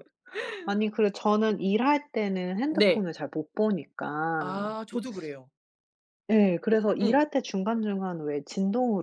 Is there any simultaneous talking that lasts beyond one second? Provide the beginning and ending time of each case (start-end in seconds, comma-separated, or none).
none